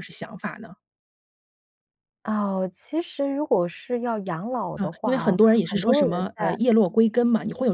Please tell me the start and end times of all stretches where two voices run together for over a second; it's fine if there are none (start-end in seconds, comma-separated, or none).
4.8-6.6